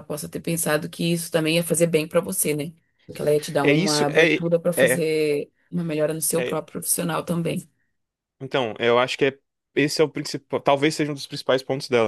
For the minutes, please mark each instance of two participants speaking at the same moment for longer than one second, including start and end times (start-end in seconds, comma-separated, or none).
3.6-5.0